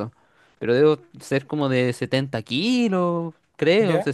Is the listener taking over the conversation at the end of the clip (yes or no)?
no